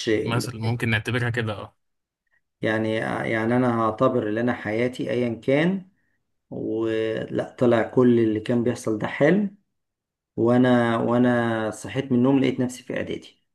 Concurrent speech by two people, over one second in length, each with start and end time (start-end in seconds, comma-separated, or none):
none